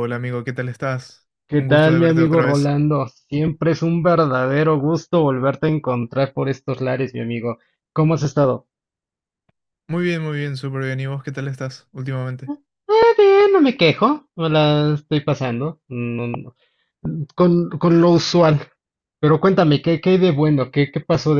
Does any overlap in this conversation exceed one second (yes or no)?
yes